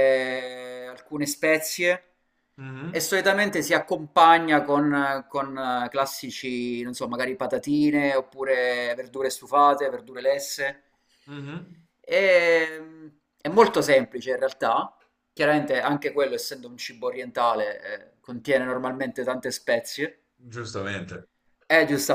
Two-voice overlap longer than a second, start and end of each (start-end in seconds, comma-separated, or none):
none